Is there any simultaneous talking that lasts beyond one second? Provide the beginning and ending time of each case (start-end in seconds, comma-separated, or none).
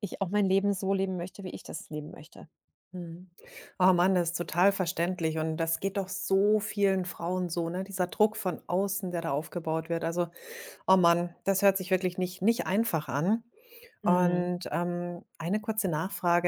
none